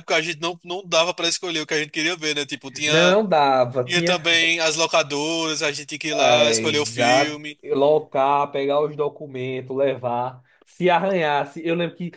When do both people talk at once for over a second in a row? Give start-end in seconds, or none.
6.2-7.6